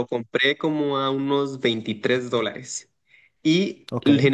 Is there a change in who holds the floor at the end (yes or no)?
no